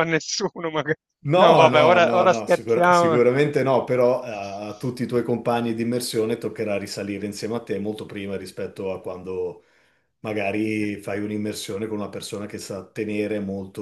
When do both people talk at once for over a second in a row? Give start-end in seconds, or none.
1.4-3.2